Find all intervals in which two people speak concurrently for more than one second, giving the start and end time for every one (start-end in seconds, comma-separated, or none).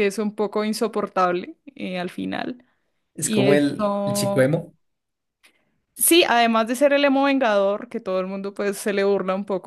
3.2-4.6